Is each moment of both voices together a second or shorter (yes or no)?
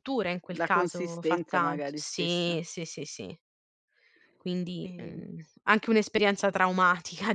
no